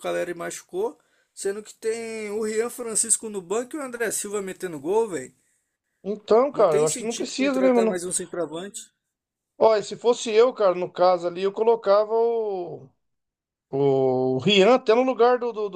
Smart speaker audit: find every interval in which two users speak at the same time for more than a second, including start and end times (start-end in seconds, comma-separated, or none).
6.5-8.0